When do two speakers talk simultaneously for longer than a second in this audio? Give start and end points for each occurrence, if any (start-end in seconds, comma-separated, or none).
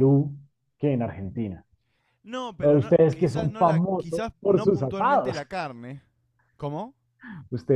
2.6-5.4